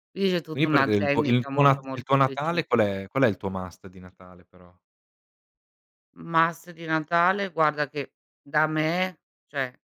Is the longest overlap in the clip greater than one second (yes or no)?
yes